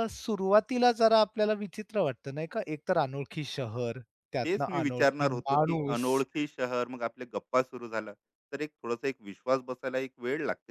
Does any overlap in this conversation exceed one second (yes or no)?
yes